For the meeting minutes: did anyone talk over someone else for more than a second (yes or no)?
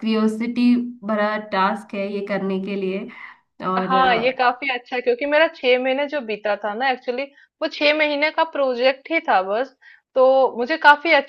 no